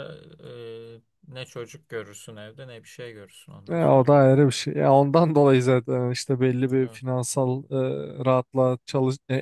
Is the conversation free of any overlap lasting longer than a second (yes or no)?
yes